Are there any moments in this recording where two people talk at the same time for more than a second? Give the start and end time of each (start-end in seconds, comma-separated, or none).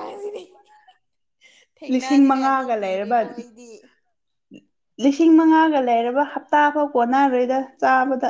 1.9-3.2